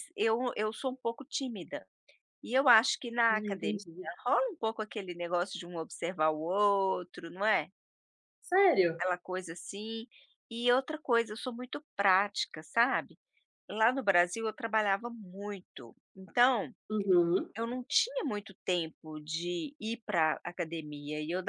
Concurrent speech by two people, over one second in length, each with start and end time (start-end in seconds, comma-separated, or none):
none